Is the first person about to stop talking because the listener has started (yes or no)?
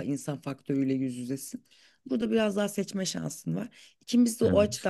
no